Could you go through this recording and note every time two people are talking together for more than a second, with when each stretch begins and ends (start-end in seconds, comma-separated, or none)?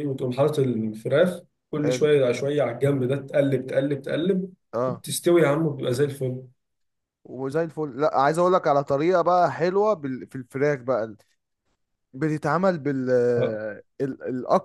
none